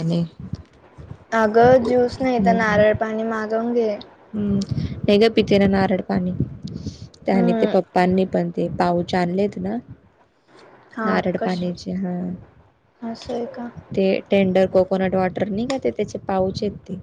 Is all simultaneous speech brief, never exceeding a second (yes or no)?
yes